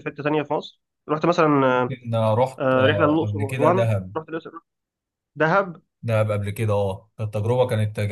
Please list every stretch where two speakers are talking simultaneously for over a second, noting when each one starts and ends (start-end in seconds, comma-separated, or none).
2.6-4.2